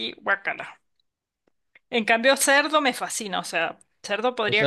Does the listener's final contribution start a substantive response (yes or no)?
yes